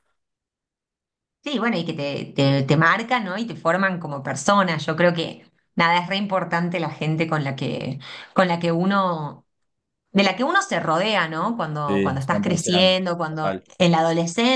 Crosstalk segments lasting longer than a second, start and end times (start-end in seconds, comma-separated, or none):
11.9-13.7